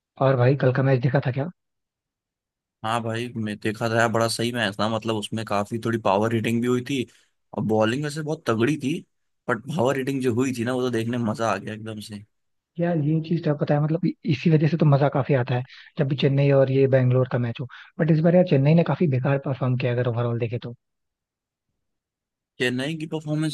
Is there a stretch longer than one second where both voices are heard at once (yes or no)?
no